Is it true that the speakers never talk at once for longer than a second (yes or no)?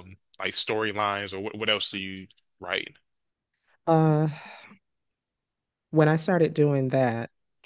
yes